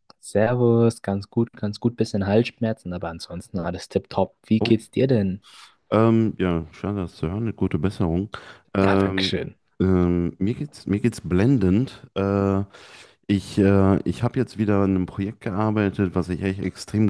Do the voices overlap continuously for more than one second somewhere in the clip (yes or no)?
no